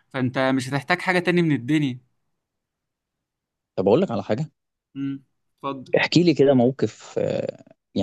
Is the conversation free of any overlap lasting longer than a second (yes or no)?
yes